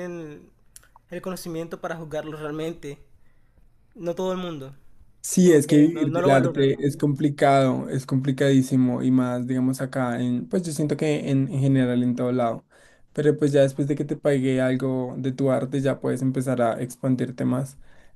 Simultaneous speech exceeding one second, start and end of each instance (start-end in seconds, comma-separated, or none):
5.4-6.7